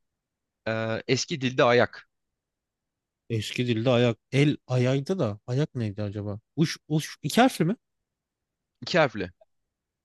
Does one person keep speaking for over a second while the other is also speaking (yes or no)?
no